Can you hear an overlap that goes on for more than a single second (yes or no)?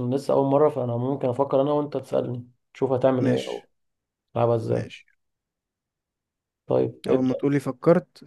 no